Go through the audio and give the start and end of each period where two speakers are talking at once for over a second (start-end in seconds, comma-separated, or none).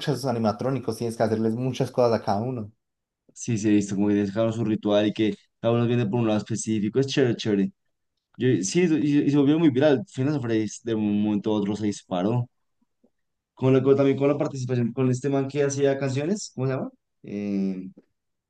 none